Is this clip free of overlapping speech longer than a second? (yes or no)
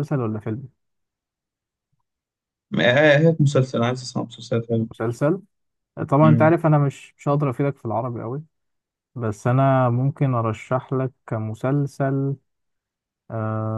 yes